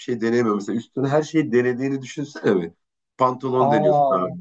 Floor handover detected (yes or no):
no